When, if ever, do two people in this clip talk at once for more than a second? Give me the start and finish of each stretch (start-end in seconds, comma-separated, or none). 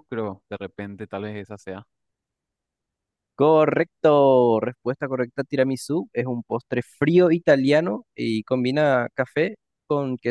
none